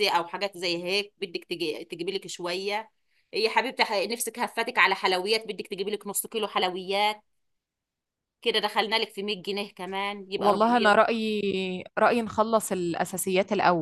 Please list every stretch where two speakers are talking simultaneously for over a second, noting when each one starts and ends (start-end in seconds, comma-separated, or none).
none